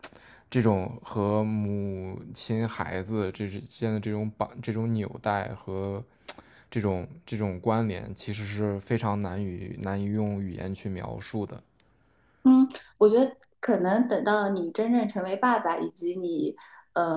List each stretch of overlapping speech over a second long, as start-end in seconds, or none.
none